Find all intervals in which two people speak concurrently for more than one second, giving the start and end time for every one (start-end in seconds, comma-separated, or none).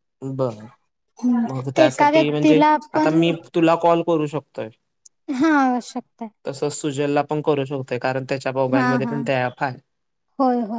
1.9-3.2